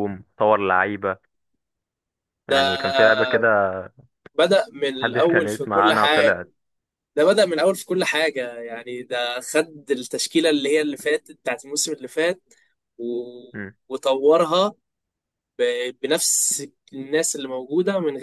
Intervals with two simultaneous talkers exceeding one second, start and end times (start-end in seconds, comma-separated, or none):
5.0-6.4